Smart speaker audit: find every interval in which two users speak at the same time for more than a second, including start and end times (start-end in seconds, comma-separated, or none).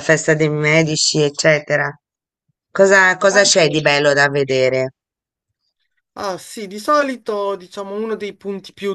none